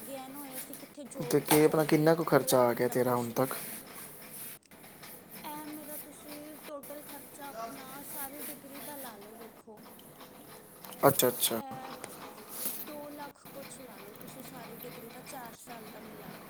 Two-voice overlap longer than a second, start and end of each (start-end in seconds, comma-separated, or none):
1.4-3.5